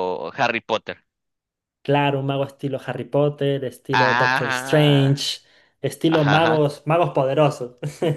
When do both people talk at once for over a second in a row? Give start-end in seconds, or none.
3.9-5.2